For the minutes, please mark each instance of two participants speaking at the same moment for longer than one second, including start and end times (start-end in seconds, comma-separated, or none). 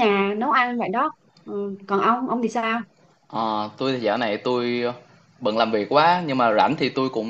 none